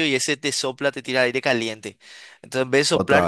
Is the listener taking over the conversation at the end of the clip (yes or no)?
no